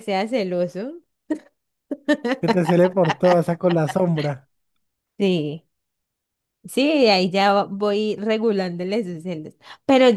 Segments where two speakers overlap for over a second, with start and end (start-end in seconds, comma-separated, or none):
none